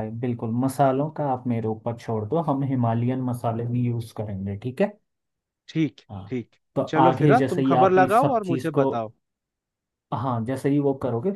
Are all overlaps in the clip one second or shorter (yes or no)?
no